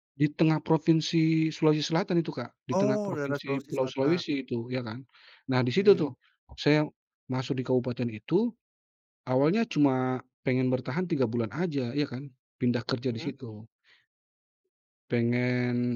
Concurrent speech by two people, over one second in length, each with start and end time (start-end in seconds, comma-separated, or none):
2.7-4.2